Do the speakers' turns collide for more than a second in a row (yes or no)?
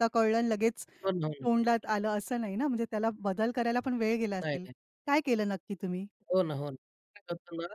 no